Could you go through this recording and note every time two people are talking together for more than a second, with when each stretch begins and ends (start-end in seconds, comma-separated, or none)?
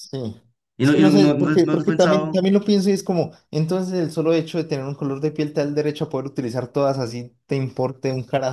0.8-2.4